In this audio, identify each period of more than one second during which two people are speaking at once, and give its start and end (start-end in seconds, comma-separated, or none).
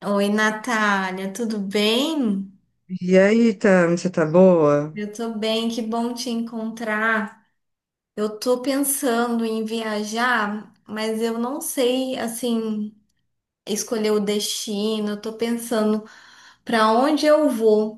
none